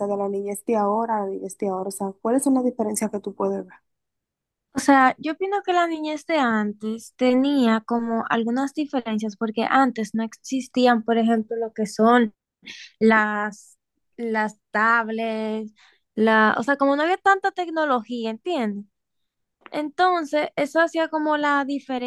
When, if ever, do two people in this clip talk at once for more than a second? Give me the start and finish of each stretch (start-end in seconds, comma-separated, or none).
none